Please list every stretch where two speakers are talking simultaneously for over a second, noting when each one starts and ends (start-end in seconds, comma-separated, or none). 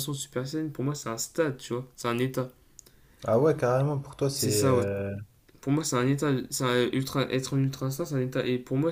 none